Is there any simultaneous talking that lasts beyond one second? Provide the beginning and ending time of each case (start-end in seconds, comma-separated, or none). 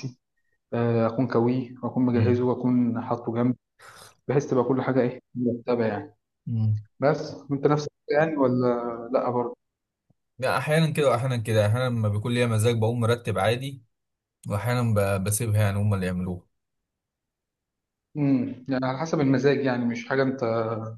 none